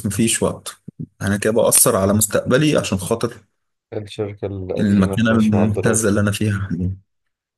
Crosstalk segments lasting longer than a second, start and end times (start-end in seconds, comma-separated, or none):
4.8-6.1